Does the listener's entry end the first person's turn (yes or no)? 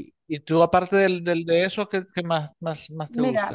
yes